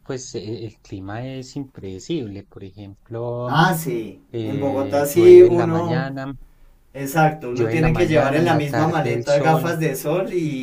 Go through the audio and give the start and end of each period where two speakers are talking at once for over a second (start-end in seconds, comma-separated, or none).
4.3-6.1, 7.5-9.8